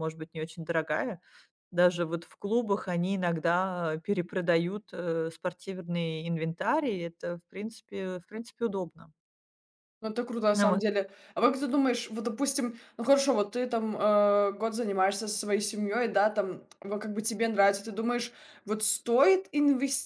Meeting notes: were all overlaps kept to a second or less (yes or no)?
yes